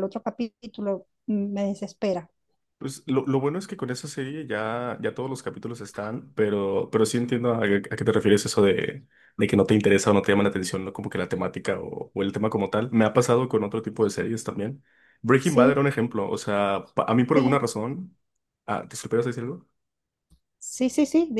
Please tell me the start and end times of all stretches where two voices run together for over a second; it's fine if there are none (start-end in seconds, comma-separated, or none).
none